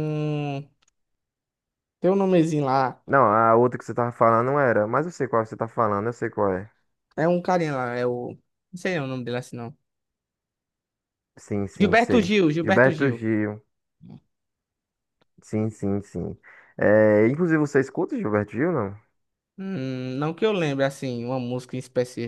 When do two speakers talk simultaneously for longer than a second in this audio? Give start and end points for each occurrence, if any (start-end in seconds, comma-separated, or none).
11.8-13.2